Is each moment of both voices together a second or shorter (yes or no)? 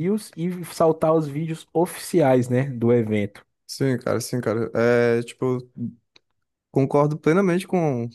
yes